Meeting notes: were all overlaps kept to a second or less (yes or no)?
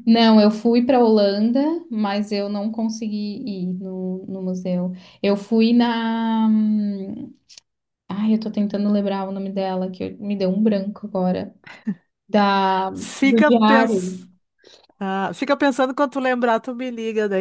no